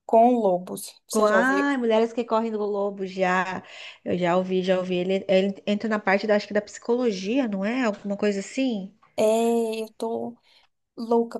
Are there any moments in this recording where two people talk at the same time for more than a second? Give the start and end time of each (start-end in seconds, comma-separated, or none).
none